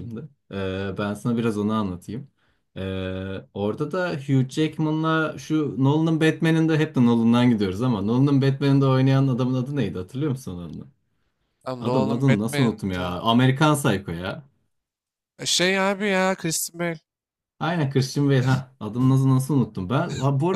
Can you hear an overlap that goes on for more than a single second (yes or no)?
yes